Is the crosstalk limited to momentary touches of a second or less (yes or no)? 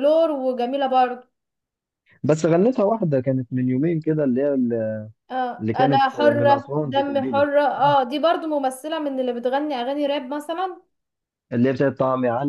no